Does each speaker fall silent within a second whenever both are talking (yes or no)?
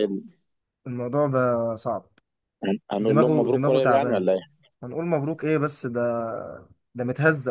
no